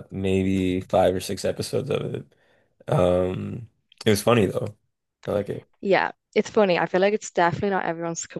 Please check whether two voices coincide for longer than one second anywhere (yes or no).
no